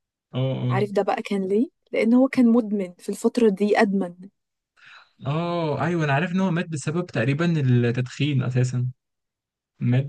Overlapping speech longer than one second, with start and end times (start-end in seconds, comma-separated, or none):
none